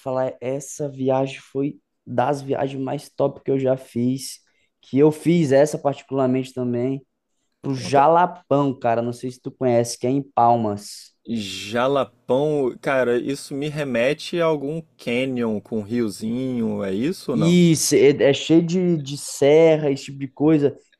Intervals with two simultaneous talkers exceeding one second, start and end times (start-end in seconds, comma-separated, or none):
none